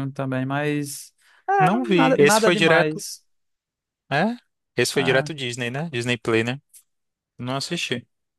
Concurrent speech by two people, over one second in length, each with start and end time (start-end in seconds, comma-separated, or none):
1.6-3.0